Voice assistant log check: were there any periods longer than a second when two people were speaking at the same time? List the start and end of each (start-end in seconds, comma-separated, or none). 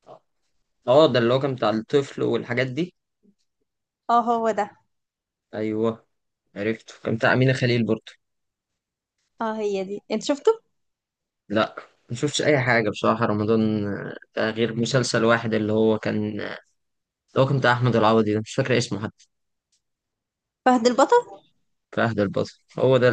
none